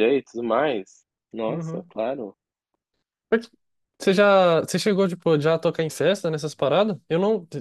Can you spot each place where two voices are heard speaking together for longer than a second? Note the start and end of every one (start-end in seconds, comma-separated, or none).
none